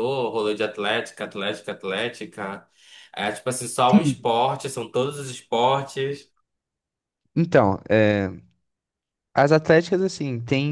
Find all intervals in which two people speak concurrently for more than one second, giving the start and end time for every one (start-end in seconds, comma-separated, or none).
none